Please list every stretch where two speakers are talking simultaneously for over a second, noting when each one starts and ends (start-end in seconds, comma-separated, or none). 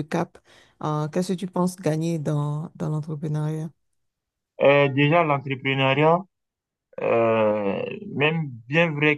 none